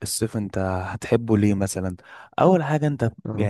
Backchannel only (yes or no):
yes